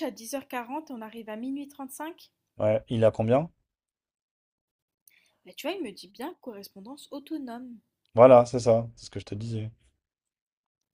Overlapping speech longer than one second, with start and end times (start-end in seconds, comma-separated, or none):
none